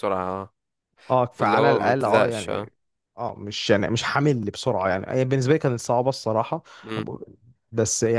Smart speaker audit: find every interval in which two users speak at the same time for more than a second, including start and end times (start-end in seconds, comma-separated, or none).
1.4-2.7